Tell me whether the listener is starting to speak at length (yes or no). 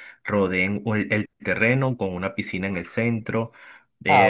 no